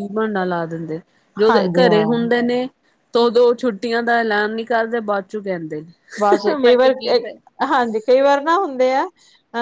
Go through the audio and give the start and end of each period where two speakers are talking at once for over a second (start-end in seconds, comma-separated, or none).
none